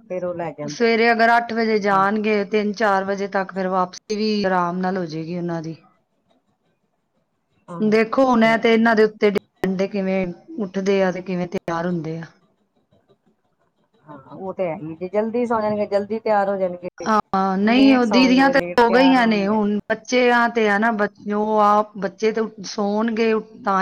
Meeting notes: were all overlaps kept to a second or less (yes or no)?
no